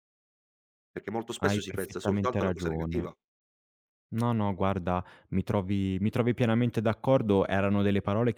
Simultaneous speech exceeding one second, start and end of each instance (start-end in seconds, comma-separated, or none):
1.4-3.1